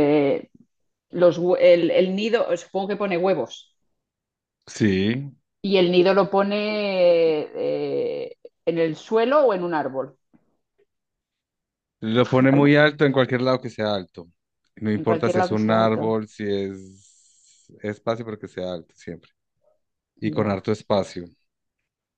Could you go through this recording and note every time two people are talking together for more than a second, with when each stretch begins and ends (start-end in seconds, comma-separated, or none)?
14.9-16.2